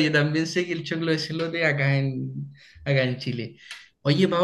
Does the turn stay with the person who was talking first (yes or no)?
yes